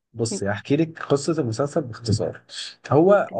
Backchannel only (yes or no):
yes